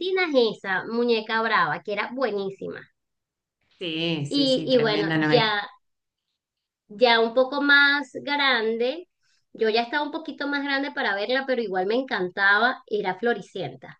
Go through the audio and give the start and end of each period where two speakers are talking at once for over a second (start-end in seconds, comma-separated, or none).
4.3-5.5